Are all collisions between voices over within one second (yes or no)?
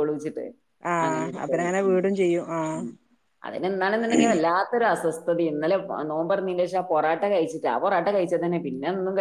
no